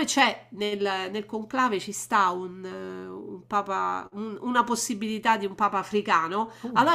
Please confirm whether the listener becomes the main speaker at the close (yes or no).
no